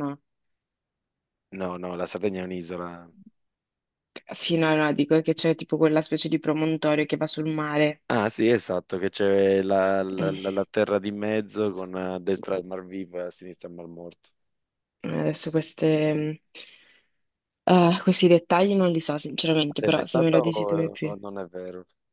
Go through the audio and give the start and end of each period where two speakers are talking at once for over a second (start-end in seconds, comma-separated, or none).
19.7-21.1